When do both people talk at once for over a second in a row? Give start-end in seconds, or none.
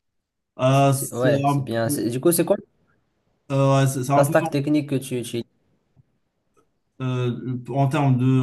0.7-2.1